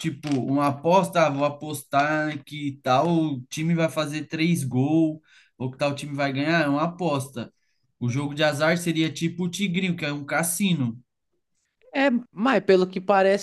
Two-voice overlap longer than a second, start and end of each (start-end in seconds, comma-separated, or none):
none